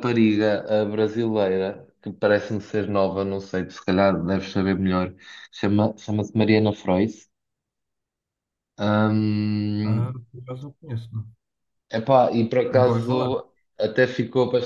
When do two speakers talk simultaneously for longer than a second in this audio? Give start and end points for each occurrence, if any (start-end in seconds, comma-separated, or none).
none